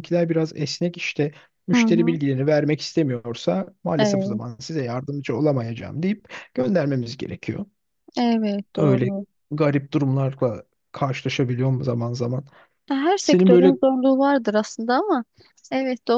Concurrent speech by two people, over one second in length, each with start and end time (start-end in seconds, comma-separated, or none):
none